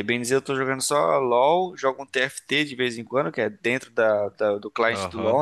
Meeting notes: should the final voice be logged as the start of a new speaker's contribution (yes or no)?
yes